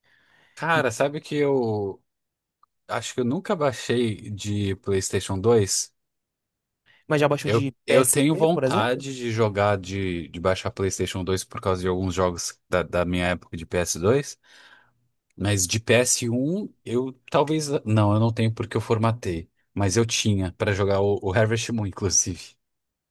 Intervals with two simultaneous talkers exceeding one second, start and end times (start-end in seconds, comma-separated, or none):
7.4-9.0